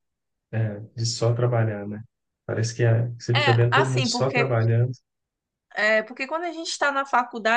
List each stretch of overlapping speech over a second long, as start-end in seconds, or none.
3.3-4.6